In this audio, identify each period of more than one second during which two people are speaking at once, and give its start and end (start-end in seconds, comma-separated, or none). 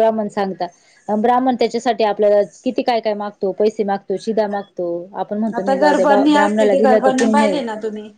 5.6-7.6